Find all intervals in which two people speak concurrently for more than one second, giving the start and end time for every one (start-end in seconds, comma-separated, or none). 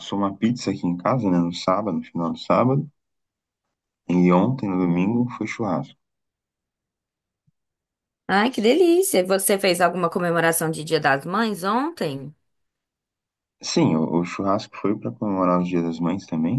none